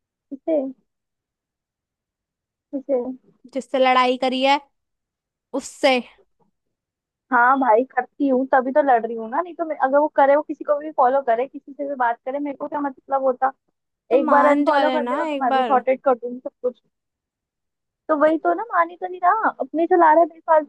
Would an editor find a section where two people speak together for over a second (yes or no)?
yes